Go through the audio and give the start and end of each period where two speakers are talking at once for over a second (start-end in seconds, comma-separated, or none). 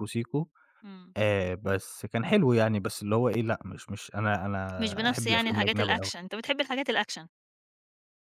4.8-6.1